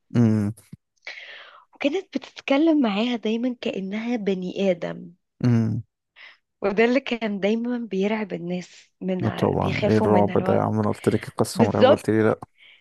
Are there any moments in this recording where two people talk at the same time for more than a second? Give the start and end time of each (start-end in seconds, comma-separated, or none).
9.2-10.6